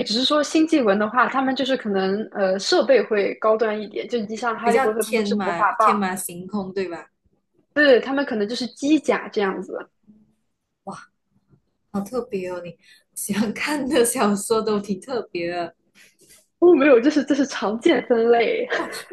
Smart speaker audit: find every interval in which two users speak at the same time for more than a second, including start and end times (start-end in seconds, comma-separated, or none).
4.6-6.0